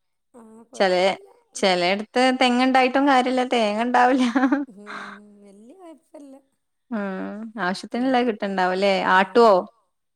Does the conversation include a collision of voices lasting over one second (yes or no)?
no